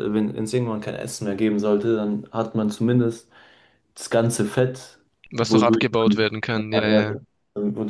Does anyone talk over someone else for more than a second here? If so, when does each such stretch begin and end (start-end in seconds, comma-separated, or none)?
5.3-7.2